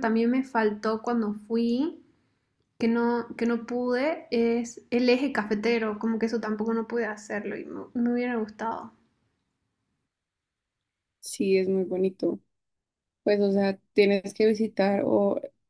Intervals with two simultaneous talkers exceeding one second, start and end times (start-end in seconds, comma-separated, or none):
none